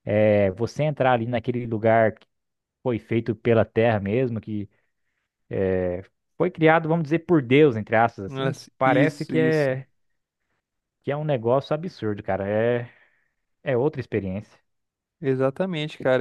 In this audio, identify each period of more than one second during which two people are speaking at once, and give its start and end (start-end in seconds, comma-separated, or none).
8.2-9.8